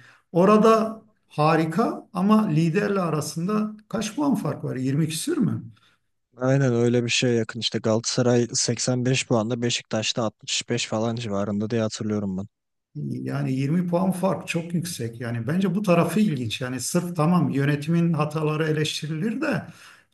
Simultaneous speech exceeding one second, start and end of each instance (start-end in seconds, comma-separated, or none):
none